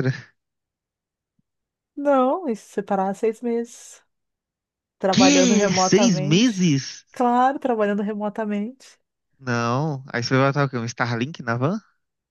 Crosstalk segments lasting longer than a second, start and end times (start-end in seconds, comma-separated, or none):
5.1-6.7